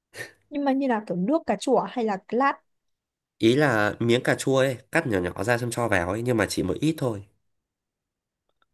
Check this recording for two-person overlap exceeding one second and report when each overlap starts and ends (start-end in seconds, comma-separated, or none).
none